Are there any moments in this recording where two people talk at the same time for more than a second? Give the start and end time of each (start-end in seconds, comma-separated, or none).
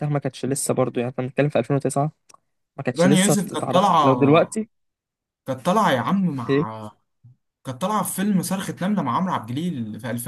3.0-4.6